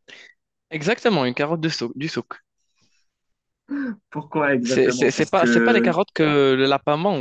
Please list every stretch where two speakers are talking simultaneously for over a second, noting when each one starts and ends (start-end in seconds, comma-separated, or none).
4.6-6.0